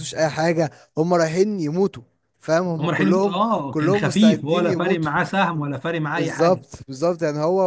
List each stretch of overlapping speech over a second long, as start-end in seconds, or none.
2.8-5.1